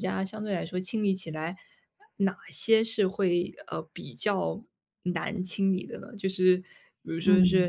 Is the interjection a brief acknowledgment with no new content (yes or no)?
yes